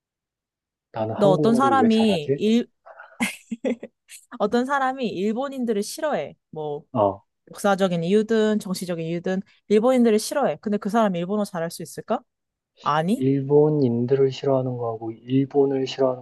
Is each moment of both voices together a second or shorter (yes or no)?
no